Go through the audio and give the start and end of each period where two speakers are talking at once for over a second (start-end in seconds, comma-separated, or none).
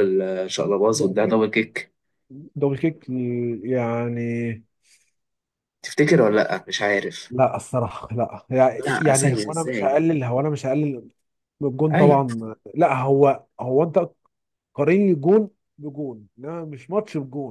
8.8-10.0